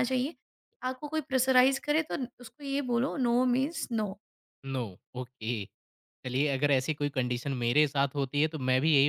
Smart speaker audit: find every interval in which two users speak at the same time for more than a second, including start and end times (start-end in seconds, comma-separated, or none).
none